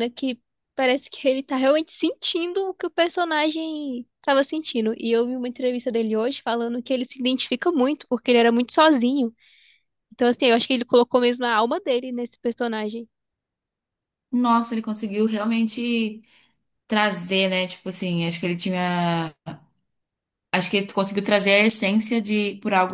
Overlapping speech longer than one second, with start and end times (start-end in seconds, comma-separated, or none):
none